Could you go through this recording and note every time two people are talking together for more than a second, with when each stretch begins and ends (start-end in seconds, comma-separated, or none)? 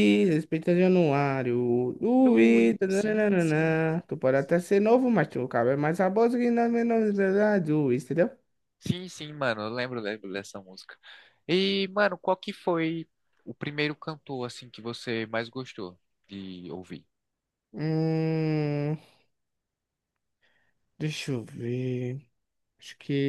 2.3-3.8